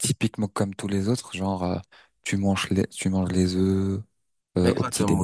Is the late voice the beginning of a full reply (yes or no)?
yes